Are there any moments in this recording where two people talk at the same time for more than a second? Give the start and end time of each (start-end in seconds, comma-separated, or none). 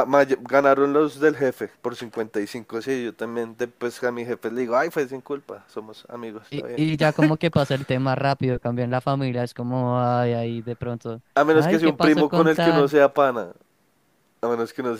11.3-12.9